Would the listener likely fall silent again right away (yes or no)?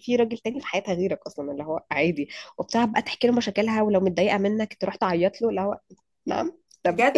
no